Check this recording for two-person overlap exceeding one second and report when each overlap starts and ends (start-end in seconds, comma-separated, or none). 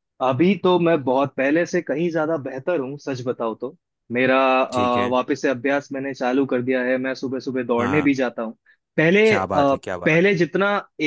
none